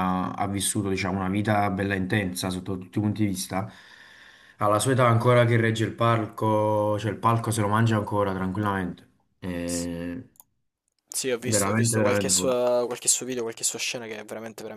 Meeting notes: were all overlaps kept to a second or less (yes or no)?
no